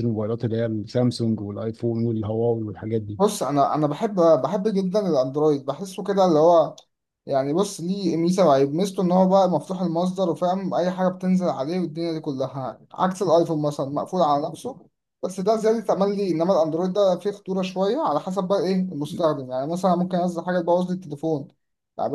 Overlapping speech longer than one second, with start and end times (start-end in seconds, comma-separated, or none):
none